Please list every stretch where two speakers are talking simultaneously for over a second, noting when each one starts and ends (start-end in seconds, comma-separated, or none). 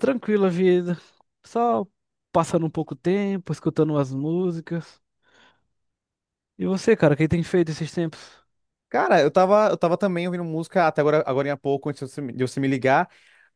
none